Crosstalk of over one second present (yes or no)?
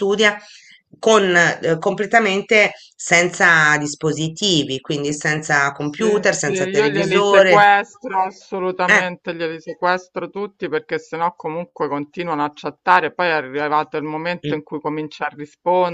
yes